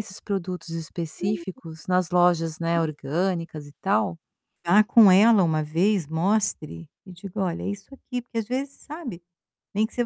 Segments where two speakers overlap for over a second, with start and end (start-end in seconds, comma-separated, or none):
none